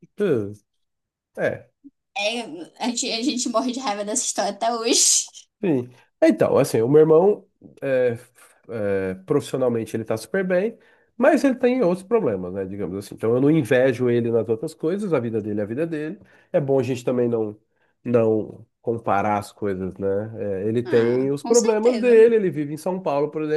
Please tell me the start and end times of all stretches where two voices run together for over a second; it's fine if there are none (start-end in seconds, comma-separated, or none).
20.8-22.1